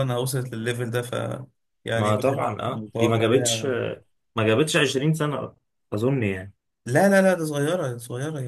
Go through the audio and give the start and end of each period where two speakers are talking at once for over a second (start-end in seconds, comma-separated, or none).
1.9-3.6